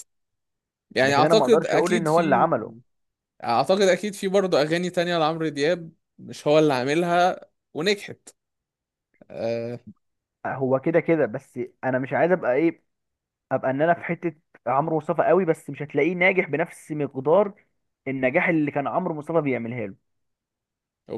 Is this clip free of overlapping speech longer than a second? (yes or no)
no